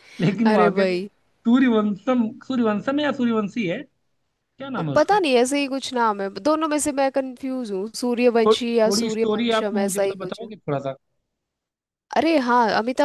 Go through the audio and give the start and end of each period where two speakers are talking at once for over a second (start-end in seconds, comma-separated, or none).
8.4-10.5